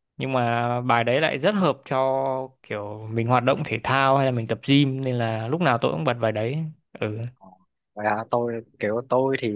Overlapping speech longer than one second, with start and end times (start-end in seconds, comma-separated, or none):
none